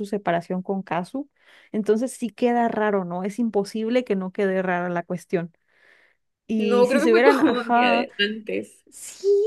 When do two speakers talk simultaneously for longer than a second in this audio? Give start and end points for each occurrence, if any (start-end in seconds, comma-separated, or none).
6.6-8.1